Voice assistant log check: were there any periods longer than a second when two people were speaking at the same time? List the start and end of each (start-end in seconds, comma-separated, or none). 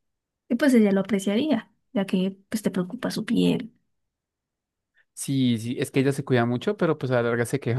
none